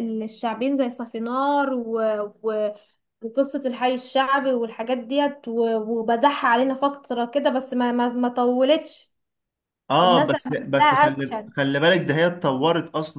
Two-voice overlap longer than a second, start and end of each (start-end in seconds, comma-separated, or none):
10.0-11.5